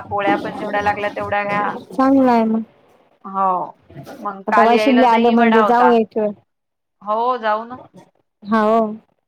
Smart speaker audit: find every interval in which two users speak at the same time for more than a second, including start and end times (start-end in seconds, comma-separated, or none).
4.5-5.9